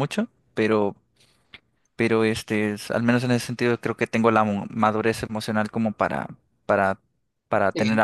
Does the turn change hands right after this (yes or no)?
yes